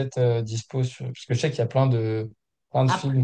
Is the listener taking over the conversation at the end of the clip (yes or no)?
no